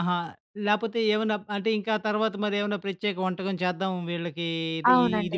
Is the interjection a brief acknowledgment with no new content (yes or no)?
no